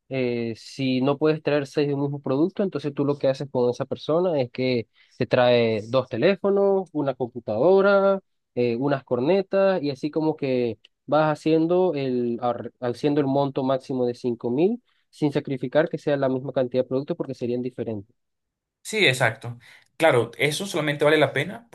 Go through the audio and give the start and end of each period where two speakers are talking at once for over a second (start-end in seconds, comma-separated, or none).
none